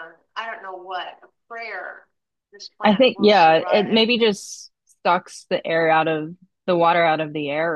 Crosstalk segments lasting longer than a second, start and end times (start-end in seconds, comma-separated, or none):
2.8-4.2